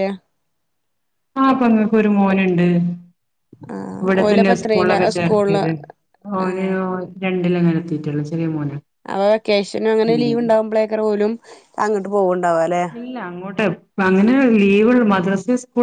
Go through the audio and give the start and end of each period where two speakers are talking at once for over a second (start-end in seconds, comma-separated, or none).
4.0-5.6